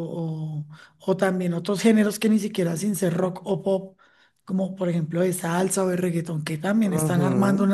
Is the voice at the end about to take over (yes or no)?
yes